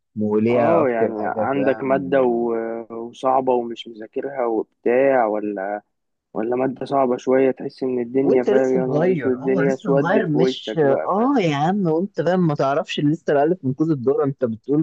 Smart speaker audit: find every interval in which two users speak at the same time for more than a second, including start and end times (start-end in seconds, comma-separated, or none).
0.5-2.2, 8.2-11.4